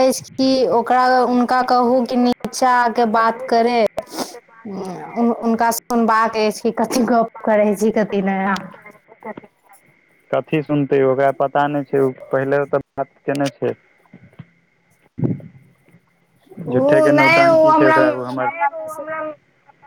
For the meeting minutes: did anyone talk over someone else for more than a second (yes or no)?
yes